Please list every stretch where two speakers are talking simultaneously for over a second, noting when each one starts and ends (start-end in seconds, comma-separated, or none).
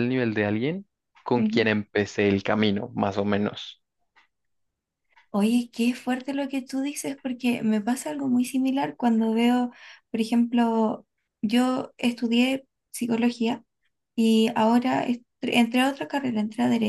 none